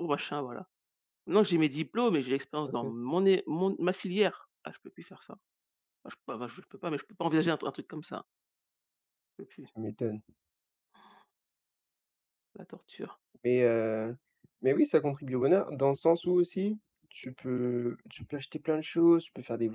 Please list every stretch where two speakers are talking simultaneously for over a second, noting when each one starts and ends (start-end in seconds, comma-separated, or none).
none